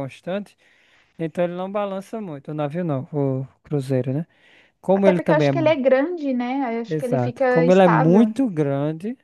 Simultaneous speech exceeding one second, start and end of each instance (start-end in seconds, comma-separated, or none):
6.9-8.3